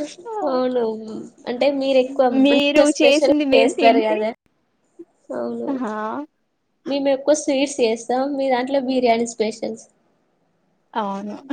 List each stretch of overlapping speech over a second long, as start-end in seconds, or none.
2.4-4.2